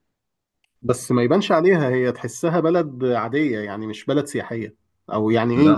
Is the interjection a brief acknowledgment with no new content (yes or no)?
yes